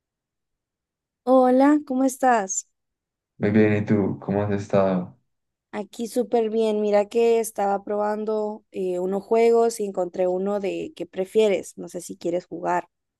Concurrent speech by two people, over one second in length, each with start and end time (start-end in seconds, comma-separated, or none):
none